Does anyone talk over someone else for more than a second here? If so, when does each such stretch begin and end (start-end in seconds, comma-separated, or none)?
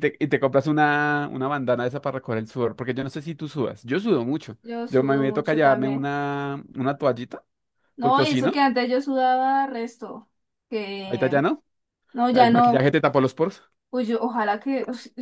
4.6-6.1